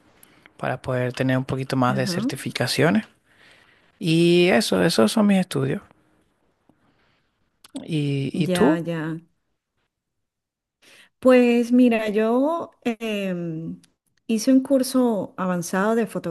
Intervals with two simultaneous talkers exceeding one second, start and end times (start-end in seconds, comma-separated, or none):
none